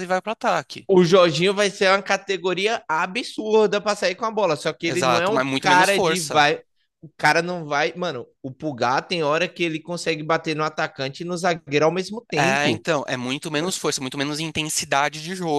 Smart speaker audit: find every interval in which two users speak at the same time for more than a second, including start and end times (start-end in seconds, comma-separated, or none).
4.9-6.4